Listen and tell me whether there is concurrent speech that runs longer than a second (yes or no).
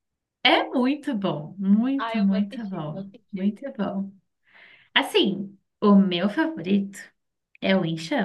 yes